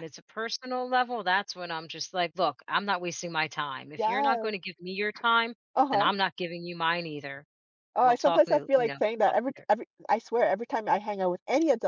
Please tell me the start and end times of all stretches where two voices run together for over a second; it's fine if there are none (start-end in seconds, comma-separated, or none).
8.0-9.7